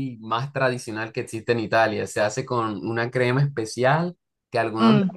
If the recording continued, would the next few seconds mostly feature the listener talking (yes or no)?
no